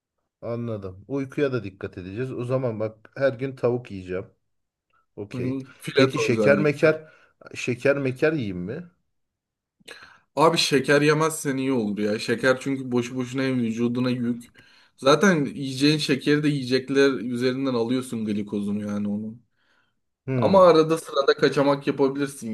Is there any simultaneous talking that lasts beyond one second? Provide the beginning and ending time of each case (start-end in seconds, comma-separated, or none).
5.3-6.9